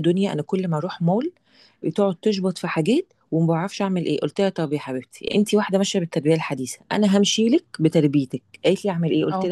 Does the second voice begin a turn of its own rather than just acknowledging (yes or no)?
no